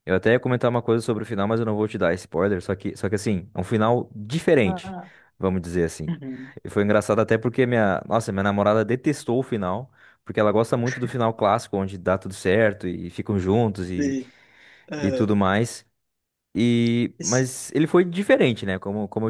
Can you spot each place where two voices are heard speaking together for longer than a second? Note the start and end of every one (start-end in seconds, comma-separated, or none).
none